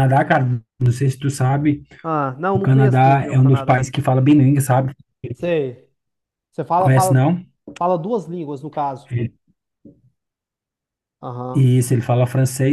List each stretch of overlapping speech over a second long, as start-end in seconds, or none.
2.5-3.9